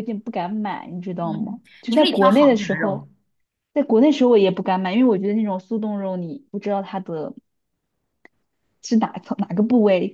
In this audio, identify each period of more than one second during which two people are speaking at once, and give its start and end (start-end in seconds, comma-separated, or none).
1.2-3.1